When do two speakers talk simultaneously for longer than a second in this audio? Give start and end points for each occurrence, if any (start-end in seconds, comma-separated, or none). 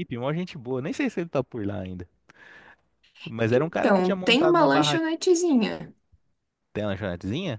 3.5-5.0